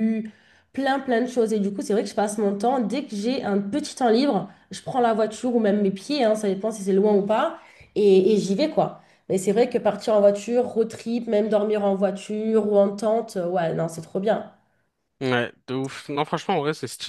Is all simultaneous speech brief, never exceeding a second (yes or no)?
yes